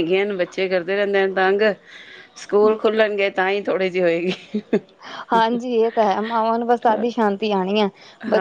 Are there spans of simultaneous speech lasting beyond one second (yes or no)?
no